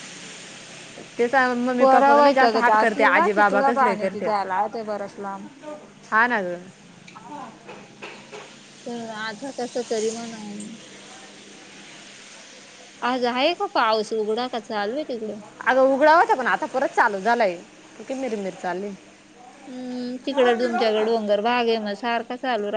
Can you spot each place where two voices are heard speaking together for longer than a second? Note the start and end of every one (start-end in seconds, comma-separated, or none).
1.8-4.3